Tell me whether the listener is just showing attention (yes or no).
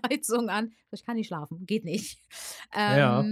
yes